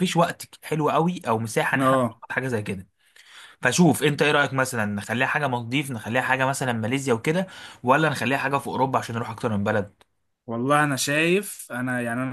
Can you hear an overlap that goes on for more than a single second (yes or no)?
no